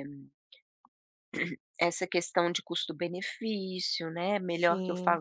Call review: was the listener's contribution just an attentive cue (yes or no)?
yes